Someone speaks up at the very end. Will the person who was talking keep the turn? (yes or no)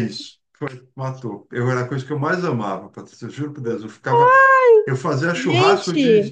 yes